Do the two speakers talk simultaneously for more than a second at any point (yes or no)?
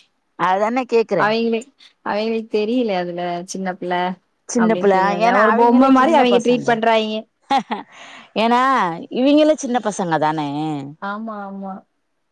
yes